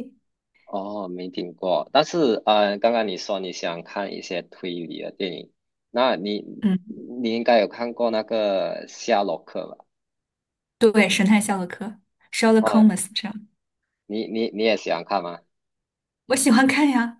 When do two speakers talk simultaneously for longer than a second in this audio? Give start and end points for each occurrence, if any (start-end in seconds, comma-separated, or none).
none